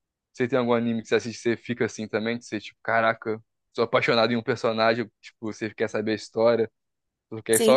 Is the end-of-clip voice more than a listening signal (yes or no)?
yes